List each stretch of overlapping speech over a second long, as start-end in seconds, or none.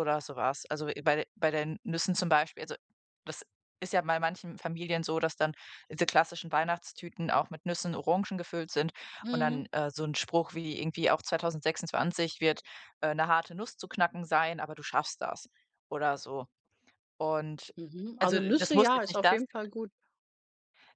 18.2-19.4